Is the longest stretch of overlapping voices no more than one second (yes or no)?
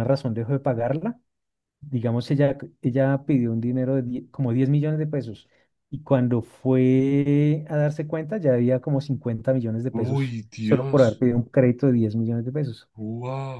no